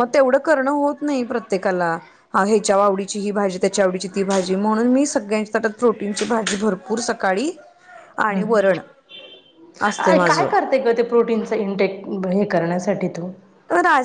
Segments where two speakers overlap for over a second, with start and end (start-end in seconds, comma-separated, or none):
none